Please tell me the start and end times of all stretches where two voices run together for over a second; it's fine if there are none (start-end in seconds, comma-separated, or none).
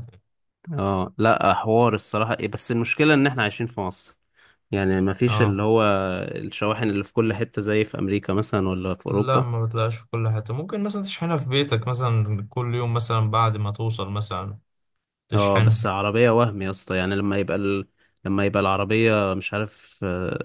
none